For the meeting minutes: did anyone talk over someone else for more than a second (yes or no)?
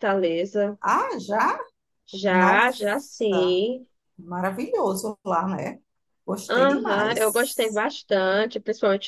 yes